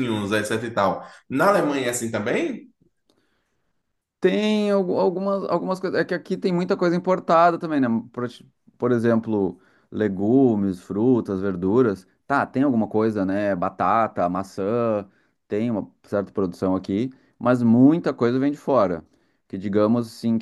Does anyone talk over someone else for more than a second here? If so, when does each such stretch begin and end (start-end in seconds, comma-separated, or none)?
none